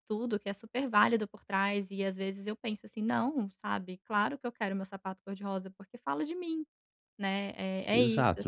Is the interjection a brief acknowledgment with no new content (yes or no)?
no